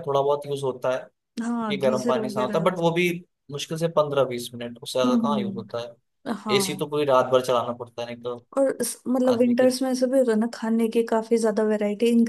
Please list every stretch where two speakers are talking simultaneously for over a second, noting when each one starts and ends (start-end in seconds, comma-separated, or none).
1.4-2.9